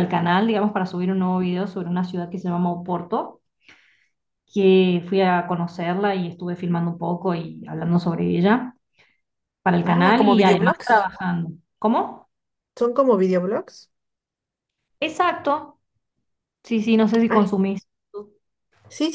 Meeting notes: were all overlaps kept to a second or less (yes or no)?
no